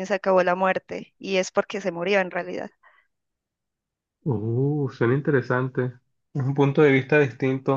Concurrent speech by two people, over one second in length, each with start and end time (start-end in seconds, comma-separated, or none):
none